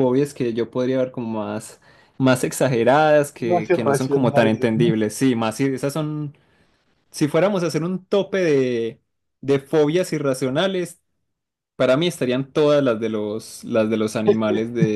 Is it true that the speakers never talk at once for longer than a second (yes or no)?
no